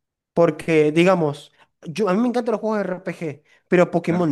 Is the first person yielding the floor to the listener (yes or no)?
no